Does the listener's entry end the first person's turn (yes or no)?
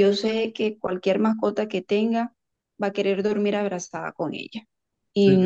no